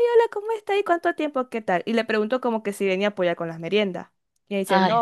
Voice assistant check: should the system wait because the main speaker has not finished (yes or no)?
yes